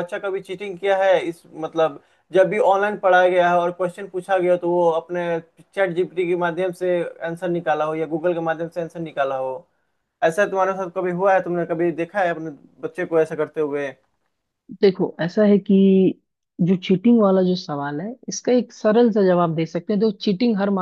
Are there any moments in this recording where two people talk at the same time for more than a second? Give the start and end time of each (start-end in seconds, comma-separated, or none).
none